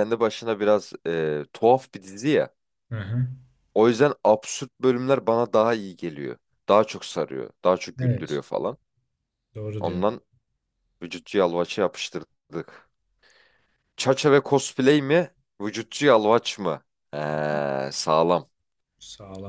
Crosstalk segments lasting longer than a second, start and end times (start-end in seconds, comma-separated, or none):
none